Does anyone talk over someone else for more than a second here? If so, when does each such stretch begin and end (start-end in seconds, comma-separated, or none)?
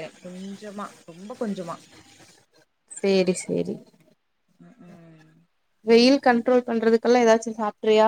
none